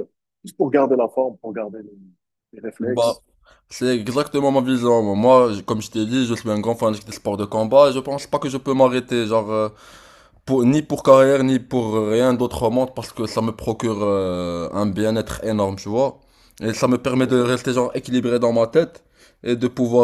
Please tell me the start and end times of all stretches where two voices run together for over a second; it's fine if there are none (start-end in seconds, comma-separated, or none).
none